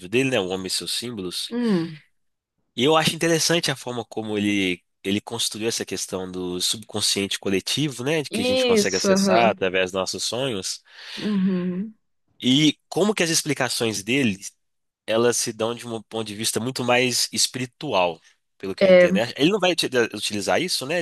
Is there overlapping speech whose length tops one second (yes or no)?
yes